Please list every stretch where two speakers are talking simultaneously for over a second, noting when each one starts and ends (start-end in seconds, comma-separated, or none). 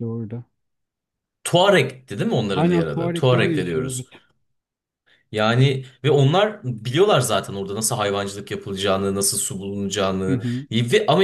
2.5-4.1